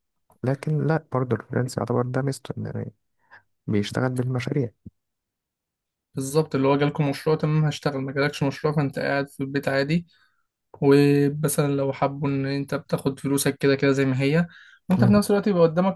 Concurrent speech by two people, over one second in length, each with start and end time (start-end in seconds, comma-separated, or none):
none